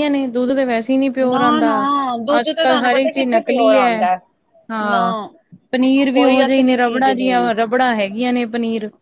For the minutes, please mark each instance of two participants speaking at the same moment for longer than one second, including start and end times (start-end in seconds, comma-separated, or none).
2.4-3.9, 6.1-7.5